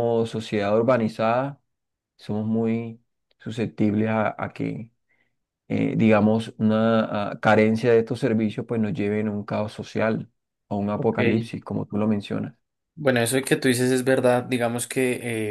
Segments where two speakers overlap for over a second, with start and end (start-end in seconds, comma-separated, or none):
none